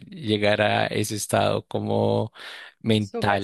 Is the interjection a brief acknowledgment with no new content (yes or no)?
no